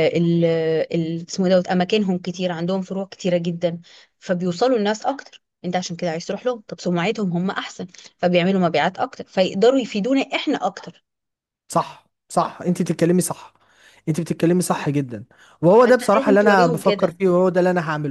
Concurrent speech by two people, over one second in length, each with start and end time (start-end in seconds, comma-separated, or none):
15.8-17.2